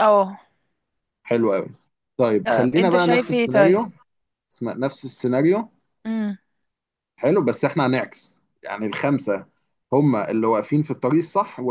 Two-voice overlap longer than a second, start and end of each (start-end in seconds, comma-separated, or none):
2.5-3.8